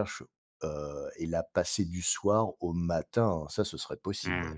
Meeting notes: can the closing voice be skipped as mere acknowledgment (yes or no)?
no